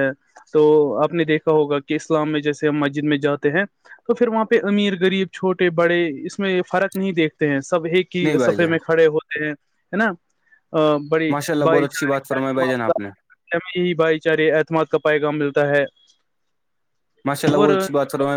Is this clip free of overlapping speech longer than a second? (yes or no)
no